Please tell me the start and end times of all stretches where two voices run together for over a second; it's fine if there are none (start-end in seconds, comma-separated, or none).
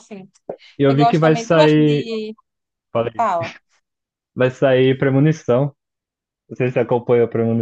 0.9-2.1